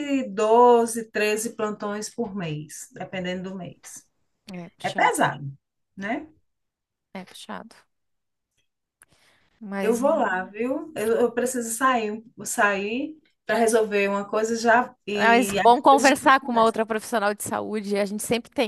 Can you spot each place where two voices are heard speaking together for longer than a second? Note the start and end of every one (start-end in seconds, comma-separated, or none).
15.1-16.7